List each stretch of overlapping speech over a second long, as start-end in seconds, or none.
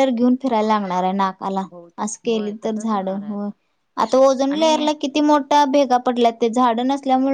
2.0-3.5